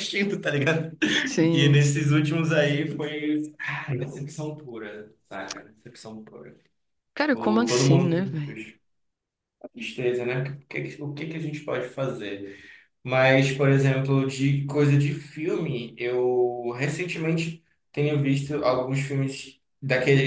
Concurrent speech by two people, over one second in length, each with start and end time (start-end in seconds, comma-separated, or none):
7.2-8.4